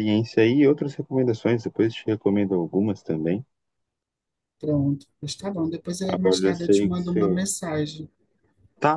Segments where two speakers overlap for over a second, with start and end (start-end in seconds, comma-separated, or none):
6.1-7.4